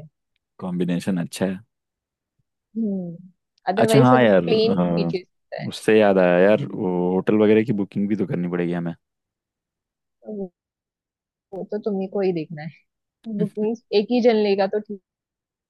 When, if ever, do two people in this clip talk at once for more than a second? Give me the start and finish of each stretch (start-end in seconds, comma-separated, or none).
3.8-5.7